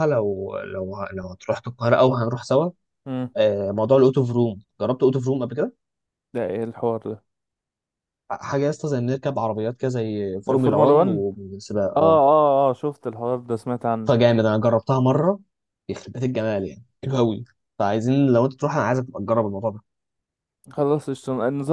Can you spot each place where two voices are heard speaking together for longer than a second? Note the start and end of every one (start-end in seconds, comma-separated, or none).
none